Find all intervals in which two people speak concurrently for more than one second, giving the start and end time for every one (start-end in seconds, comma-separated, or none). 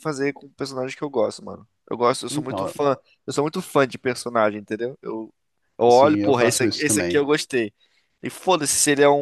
5.9-7.2